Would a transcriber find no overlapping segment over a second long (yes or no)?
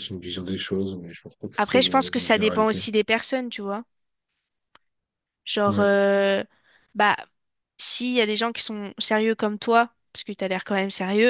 no